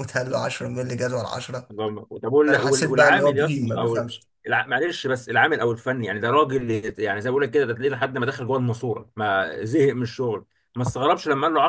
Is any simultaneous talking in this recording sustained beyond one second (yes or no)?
yes